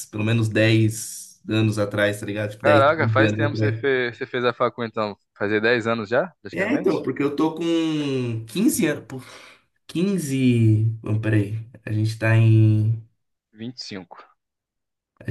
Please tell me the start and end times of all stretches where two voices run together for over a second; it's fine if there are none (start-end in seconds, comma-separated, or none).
2.6-3.8